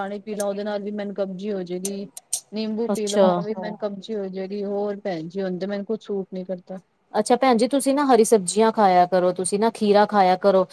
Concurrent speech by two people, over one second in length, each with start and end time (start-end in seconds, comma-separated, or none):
none